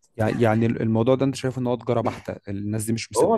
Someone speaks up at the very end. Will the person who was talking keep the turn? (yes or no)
yes